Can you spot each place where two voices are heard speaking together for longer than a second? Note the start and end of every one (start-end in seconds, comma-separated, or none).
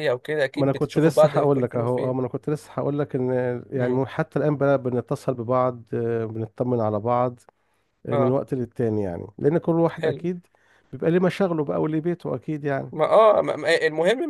0.6-2.3